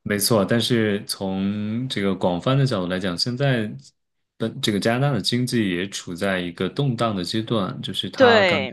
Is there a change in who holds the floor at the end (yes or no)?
no